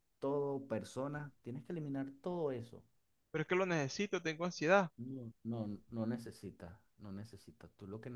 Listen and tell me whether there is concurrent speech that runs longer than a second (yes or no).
no